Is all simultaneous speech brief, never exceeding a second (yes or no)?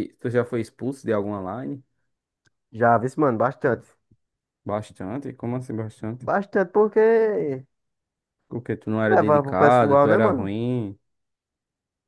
no